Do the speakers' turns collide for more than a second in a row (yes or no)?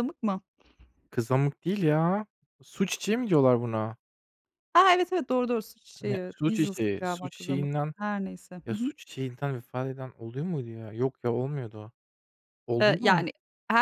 yes